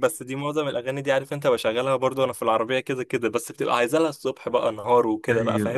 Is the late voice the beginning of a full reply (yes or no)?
yes